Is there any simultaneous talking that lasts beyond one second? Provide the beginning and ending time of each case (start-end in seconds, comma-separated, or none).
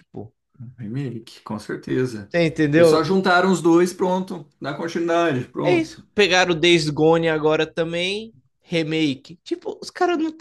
none